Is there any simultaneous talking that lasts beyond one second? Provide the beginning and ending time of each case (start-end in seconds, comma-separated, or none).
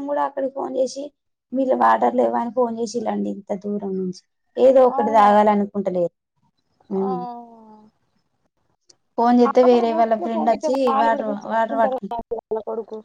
9.4-12.1